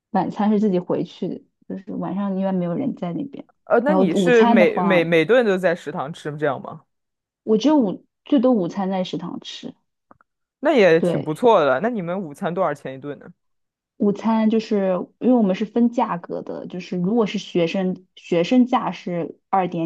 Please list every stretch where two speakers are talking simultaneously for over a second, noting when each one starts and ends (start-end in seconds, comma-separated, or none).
3.8-5.1